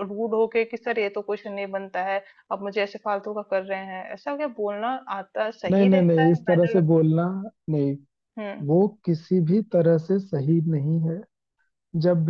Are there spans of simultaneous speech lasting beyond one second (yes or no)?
yes